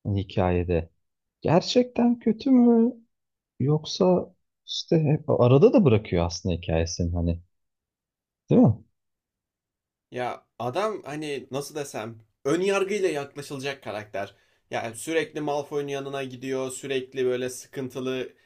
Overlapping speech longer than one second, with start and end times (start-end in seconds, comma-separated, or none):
none